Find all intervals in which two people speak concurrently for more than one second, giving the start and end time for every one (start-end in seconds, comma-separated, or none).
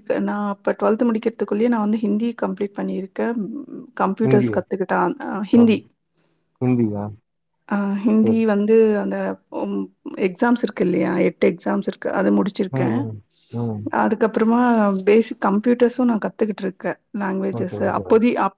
none